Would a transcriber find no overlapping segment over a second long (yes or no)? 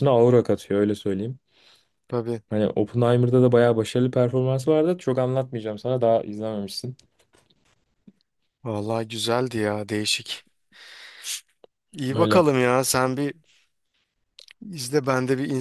yes